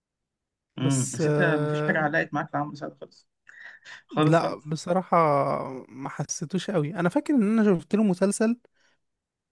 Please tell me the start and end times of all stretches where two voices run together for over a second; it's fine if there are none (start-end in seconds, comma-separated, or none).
0.8-2.1